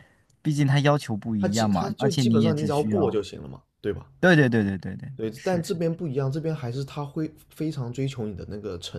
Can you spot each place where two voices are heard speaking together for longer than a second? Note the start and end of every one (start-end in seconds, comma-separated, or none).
1.4-3.2